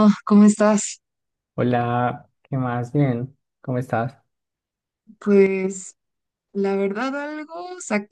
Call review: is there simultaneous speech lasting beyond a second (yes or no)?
no